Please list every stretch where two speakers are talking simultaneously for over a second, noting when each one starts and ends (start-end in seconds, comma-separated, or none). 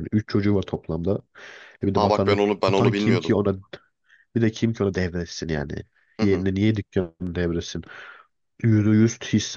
1.9-3.3